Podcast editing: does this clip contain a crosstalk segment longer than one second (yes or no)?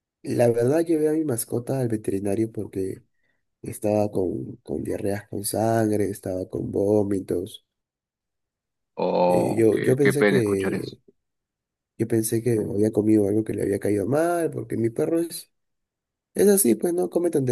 yes